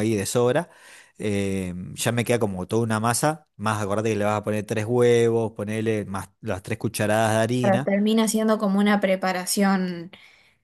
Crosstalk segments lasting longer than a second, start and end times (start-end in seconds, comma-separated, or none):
none